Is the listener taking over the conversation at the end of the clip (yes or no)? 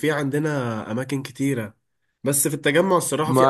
no